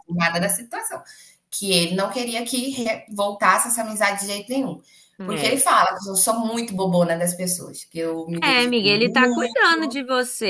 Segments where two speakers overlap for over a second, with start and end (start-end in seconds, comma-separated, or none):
8.4-9.6